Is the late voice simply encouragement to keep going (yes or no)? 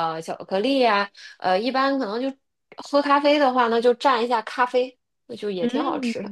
no